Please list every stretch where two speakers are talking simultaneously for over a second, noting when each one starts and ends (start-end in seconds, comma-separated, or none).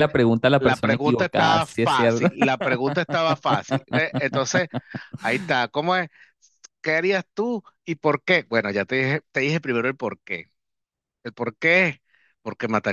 0.6-2.3